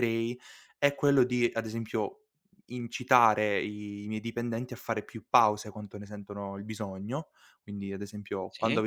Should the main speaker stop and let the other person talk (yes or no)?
no